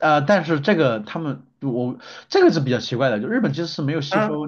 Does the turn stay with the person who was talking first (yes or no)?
yes